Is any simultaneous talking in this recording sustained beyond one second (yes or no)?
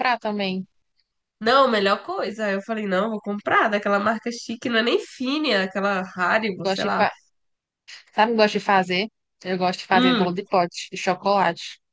no